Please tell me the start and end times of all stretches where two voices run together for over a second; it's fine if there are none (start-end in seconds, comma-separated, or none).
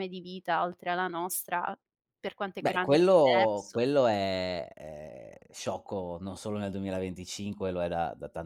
2.6-3.8